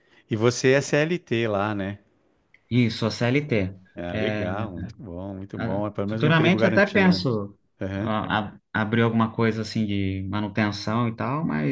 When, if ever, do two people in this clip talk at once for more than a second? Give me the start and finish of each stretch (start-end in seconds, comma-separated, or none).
5.6-7.3